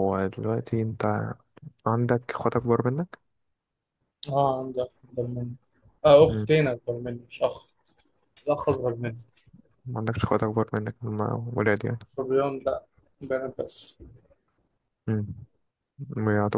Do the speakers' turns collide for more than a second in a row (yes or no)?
no